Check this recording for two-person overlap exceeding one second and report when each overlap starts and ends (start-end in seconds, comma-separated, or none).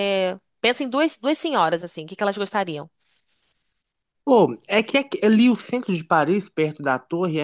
none